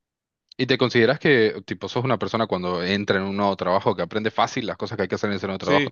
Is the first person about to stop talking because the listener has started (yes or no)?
yes